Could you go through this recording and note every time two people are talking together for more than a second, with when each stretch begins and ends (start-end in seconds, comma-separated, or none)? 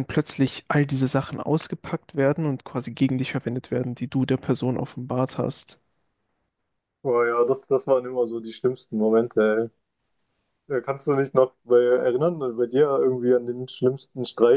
none